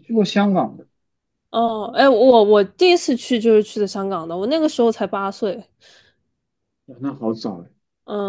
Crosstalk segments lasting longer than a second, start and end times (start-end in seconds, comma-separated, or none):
none